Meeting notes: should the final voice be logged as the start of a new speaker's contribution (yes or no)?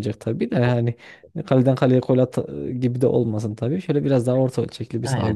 yes